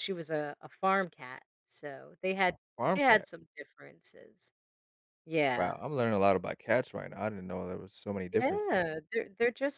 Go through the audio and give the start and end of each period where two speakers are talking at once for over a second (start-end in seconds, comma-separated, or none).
none